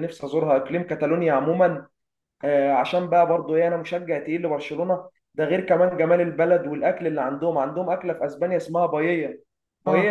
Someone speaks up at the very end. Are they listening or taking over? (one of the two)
listening